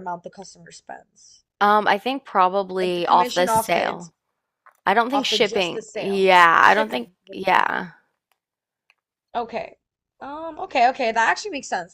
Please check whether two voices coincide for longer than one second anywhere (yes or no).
yes